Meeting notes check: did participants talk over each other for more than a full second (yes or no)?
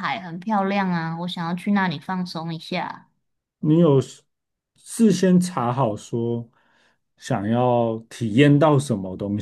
no